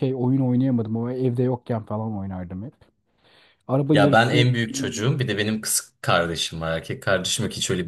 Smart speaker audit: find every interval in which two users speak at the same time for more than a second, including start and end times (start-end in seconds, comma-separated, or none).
none